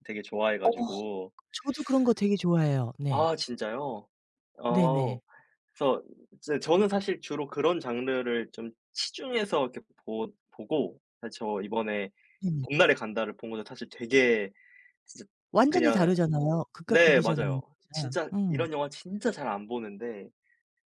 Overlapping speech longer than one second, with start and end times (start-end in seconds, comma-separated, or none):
16.9-18.7